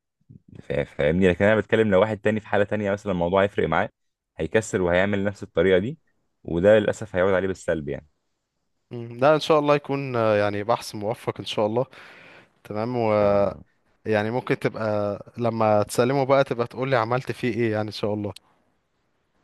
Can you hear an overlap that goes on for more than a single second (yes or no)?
no